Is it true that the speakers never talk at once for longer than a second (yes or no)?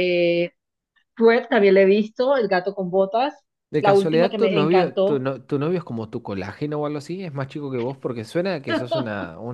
no